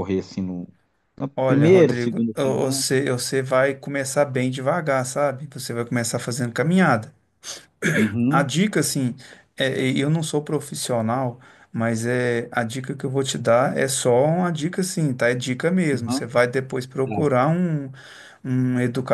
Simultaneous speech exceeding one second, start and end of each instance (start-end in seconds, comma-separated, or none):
1.4-2.8